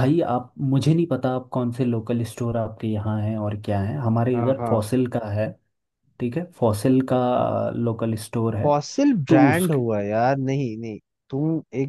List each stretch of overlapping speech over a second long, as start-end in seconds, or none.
none